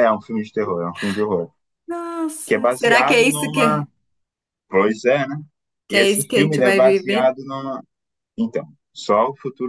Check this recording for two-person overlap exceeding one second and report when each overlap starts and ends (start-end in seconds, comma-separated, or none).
2.5-3.9, 5.9-7.3